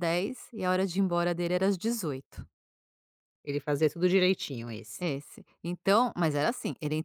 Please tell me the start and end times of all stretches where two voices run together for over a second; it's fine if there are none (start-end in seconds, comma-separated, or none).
none